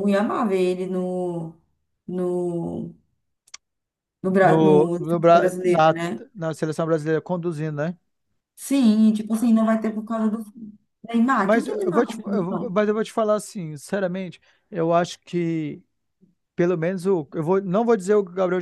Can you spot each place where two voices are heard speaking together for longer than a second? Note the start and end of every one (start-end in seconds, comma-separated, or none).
4.4-6.0, 11.4-12.8